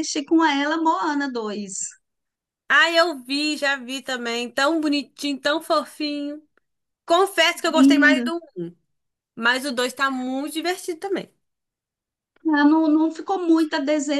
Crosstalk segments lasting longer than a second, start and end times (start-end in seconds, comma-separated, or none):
none